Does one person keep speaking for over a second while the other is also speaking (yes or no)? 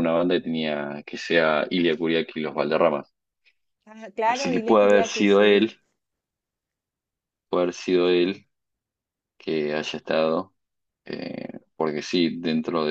yes